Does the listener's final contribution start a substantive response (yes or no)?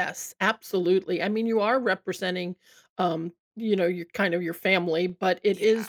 no